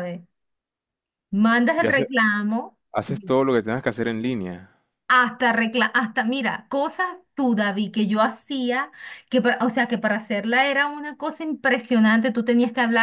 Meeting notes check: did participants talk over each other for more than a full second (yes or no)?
no